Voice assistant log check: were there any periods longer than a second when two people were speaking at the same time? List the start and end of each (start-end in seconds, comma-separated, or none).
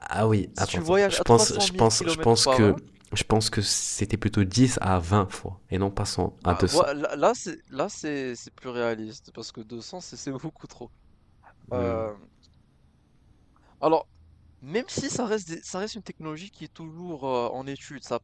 0.5-2.8